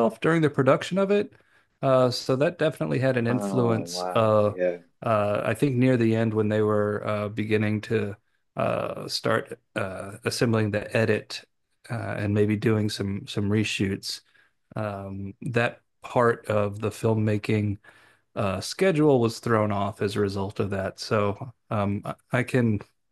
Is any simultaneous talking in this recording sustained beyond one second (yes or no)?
yes